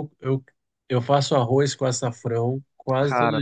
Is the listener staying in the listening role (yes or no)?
yes